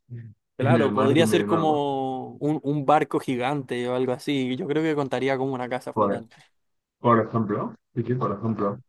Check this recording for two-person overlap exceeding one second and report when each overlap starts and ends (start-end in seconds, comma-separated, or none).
0.6-1.8